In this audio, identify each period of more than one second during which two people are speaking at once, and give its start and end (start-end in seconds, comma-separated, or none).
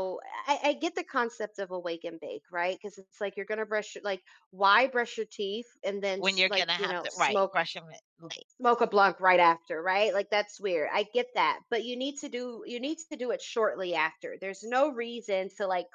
6.2-7.6